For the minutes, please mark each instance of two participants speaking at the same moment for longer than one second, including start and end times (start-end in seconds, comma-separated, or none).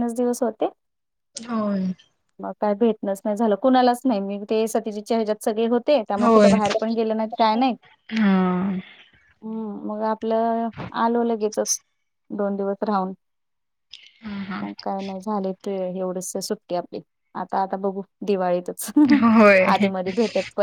none